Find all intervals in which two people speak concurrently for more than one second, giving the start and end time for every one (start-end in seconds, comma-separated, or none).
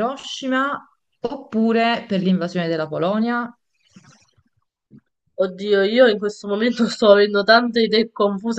none